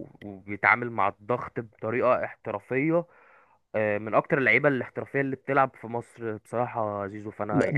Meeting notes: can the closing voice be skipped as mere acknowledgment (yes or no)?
no